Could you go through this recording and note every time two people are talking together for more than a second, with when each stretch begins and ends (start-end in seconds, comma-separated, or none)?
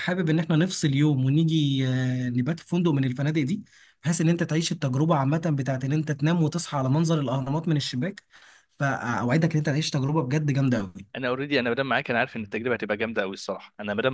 none